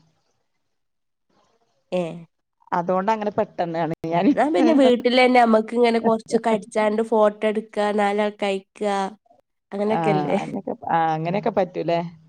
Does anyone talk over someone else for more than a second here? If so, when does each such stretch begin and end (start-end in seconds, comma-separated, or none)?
none